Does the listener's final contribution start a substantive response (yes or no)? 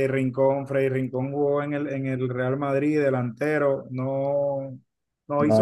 no